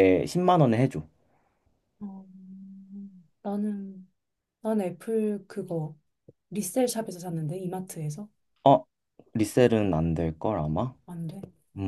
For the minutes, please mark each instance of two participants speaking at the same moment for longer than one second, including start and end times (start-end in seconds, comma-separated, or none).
none